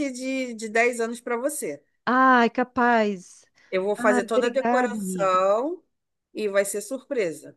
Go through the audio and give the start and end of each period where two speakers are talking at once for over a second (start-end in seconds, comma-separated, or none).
4.0-5.4